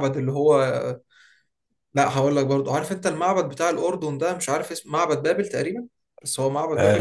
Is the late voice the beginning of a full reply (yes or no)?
yes